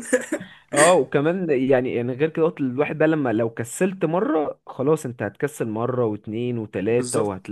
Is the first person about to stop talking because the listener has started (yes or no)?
yes